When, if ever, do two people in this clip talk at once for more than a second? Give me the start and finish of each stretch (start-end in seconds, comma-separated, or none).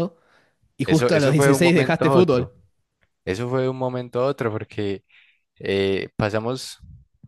0.8-2.5